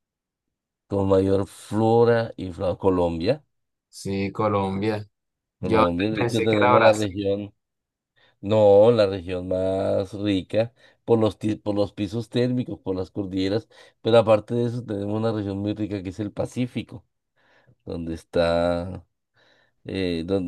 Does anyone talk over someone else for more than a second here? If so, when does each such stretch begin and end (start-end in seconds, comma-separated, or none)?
5.6-7.2